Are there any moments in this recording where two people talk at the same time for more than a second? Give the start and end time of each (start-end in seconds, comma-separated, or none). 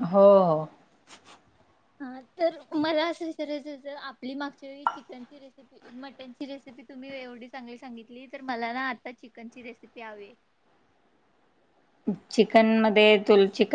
none